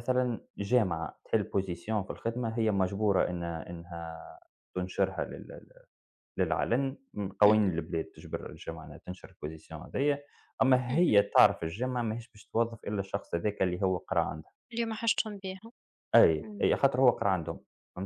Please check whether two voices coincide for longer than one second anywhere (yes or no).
no